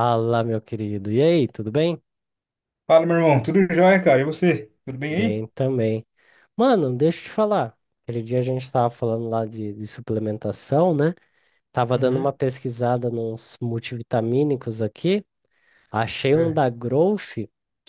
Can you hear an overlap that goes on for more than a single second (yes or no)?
no